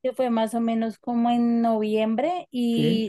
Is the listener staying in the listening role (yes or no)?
yes